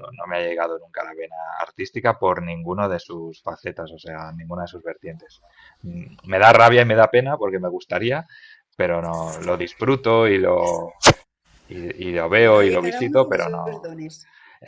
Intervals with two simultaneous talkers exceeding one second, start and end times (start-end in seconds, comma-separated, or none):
12.4-13.9